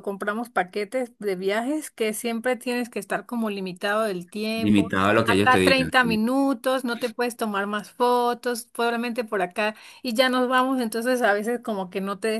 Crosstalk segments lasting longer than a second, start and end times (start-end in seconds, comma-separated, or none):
4.5-6.2